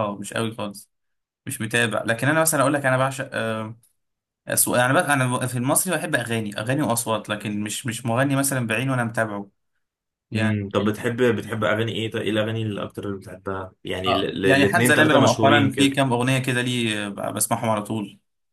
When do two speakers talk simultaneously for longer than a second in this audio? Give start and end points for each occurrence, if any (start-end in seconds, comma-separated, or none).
14.1-16.0